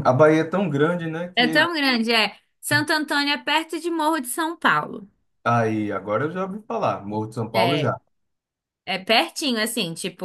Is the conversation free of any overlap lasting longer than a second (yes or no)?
yes